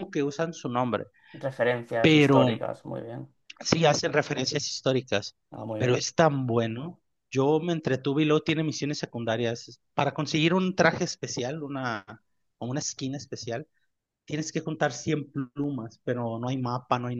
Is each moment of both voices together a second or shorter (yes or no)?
yes